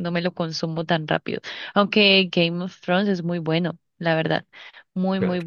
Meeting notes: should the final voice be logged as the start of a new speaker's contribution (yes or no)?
no